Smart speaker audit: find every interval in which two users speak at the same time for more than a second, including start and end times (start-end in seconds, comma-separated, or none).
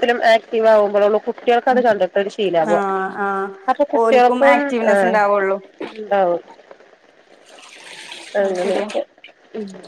4.0-5.6